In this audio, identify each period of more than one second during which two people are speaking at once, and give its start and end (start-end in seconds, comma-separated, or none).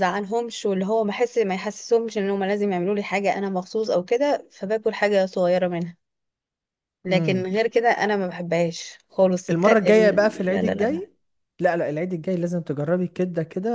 9.5-11.0